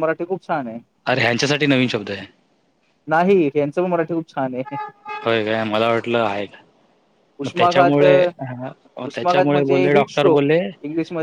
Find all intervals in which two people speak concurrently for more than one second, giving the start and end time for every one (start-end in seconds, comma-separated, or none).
9.2-10.4